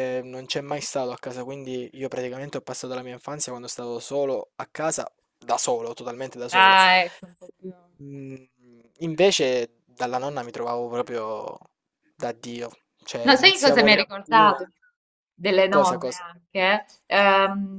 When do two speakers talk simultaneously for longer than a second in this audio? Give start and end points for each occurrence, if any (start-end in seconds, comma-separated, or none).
13.2-14.6